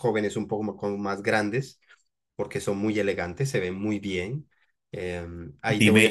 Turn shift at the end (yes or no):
yes